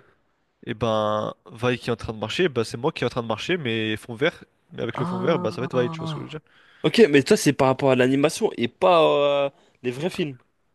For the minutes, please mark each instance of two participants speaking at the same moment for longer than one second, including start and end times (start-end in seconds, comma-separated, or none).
4.9-6.4